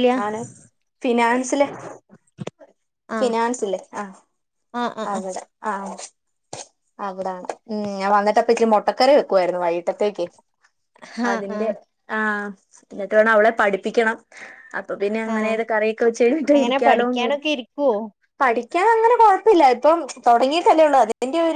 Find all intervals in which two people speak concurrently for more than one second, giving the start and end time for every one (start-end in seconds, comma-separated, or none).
none